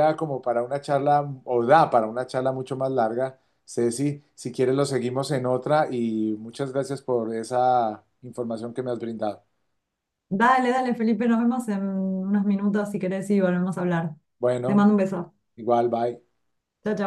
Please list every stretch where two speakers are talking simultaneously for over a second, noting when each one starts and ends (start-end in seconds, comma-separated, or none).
none